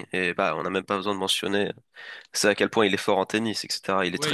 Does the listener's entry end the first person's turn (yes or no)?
yes